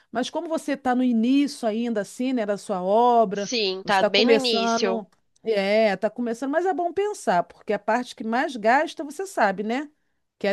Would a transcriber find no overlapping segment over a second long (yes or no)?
no